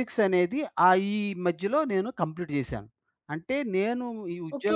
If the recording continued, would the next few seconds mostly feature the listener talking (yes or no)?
yes